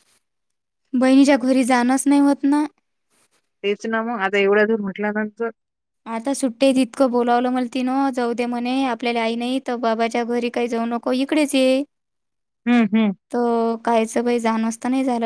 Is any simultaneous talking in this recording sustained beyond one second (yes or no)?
no